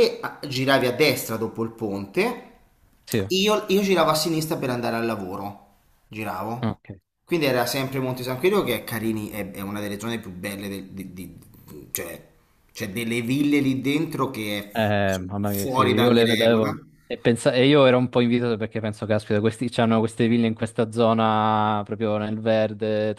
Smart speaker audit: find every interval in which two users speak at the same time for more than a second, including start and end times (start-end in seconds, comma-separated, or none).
14.8-16.7